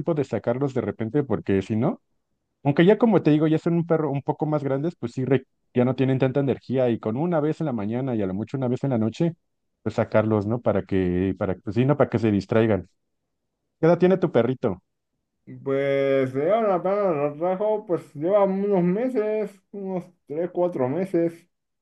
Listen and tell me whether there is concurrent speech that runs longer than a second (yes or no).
no